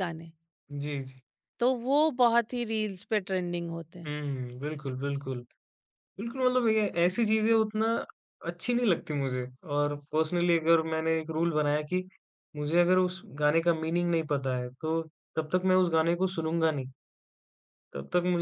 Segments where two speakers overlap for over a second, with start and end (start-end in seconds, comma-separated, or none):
none